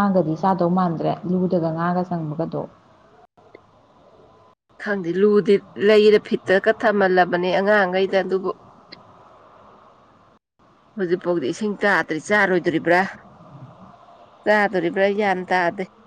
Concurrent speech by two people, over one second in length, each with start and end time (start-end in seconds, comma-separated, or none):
none